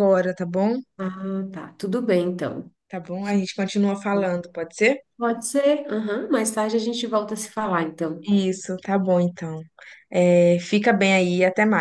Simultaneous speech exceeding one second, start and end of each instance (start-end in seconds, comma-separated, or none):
none